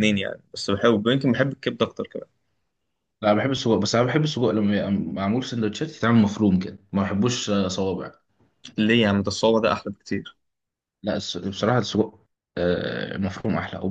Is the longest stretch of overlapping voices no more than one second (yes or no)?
yes